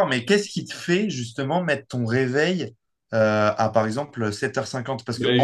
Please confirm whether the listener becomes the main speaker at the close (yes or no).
yes